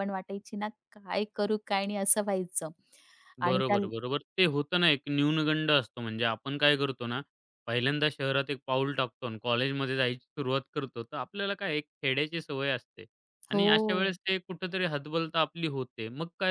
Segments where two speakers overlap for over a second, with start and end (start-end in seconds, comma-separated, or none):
none